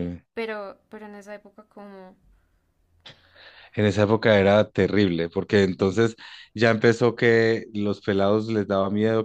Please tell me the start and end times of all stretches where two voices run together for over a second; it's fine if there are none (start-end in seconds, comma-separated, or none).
none